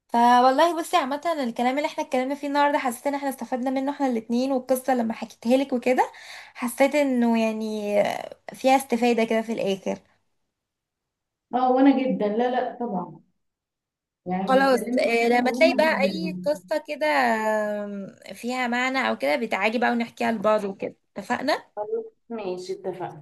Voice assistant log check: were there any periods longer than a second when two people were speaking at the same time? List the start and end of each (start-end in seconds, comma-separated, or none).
14.5-16.3